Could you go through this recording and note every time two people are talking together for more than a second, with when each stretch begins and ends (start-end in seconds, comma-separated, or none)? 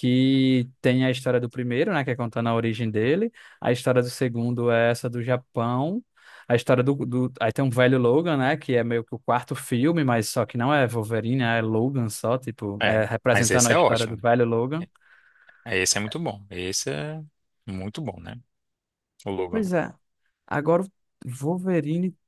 12.8-14.2